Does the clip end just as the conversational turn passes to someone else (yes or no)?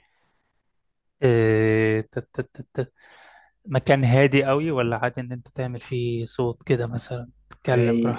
yes